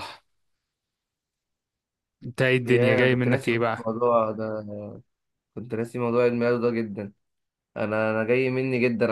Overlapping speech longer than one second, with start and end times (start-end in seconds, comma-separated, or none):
2.7-3.9